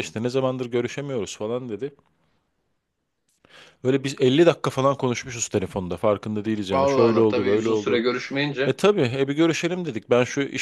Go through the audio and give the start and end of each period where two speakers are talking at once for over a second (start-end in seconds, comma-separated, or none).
6.7-8.0